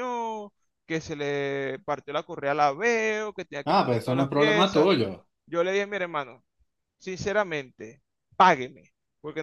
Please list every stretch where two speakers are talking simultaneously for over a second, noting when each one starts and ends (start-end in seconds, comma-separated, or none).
3.6-4.9